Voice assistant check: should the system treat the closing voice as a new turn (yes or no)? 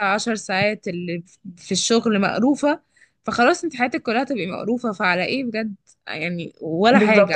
yes